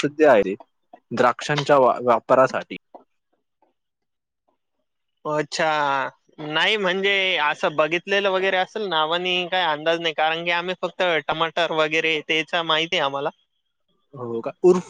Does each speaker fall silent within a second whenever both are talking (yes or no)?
yes